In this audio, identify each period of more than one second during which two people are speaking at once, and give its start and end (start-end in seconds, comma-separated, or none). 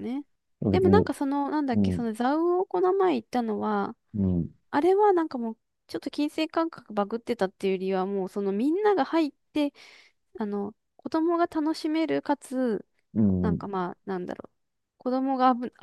none